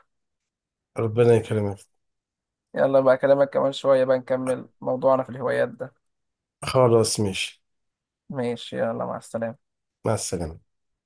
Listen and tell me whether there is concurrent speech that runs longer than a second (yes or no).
no